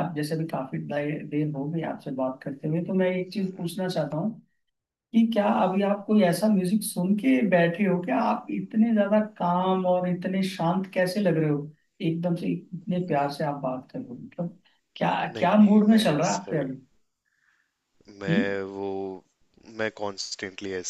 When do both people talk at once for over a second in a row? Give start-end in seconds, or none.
15.3-16.7